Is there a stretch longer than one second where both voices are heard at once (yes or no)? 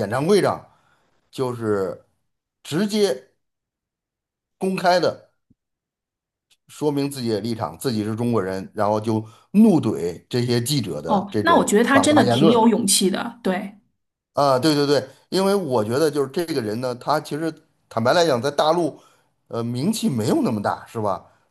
yes